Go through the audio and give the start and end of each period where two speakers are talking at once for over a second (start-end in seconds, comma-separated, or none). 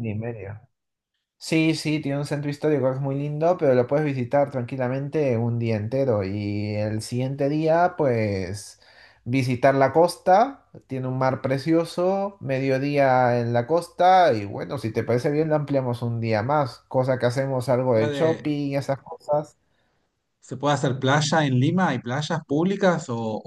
none